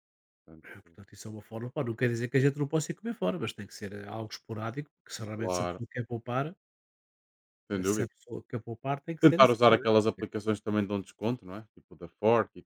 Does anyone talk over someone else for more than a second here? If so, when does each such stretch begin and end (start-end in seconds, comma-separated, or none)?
none